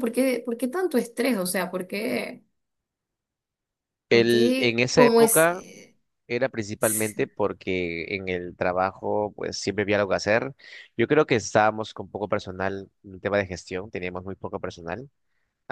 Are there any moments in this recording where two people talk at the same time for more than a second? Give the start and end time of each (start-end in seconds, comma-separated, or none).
4.1-5.7